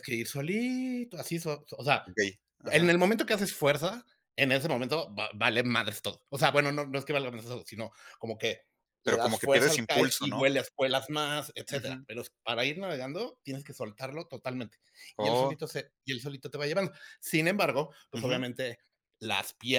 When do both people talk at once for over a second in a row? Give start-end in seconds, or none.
9.1-10.5